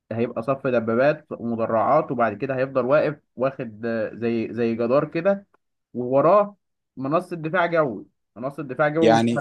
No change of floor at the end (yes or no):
no